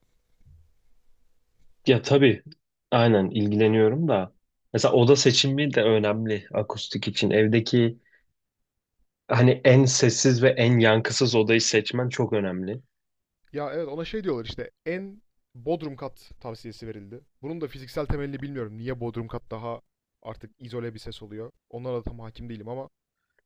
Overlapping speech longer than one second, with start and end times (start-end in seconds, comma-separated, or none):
none